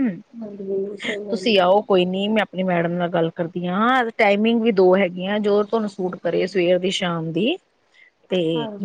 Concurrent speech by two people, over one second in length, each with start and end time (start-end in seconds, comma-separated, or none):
none